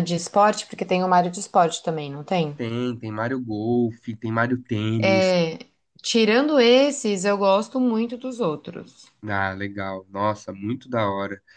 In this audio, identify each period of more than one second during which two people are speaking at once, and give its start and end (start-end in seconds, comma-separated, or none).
none